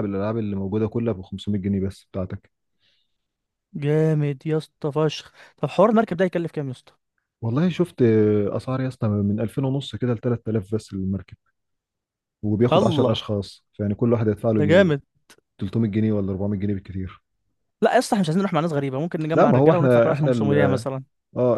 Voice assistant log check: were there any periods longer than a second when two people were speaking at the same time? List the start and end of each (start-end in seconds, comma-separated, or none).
19.3-20.8